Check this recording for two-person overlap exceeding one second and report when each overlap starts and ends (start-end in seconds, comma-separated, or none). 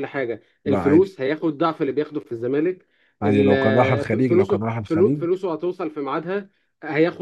3.2-5.3